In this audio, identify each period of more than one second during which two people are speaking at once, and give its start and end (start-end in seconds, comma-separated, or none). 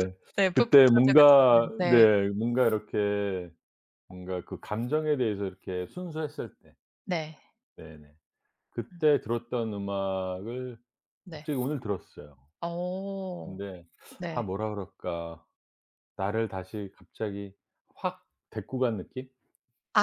0.5-2.0